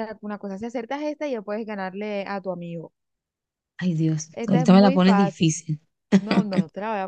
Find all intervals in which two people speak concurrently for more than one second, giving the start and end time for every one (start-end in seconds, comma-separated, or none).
4.3-5.6